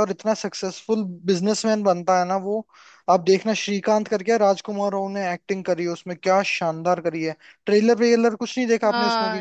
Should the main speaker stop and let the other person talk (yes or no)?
yes